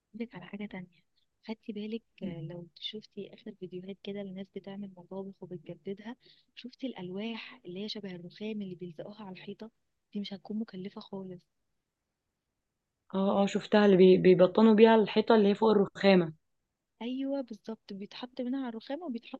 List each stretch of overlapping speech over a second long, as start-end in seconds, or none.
none